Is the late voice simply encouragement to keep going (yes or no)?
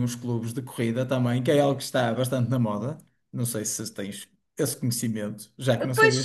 no